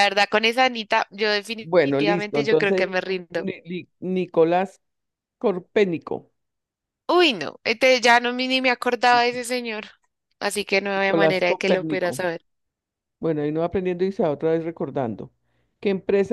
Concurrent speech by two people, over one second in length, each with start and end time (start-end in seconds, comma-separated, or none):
1.6-3.5, 10.9-12.2